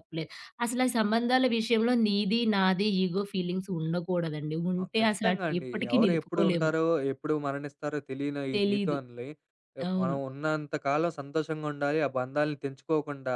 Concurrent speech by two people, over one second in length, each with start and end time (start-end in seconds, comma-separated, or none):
4.8-6.7